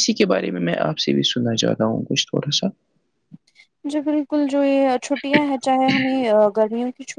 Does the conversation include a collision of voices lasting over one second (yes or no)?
no